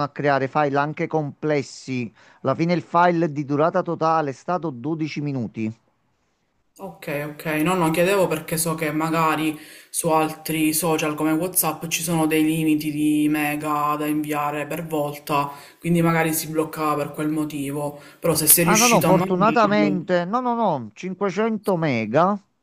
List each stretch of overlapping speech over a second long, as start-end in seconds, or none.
18.6-20.0